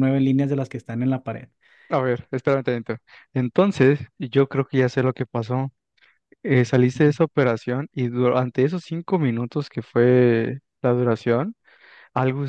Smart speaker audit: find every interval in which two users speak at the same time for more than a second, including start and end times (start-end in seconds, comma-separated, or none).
none